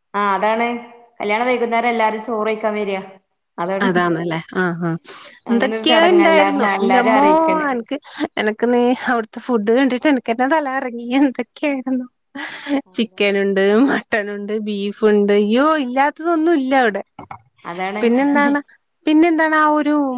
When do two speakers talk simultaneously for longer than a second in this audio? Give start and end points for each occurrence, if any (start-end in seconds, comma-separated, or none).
5.5-7.3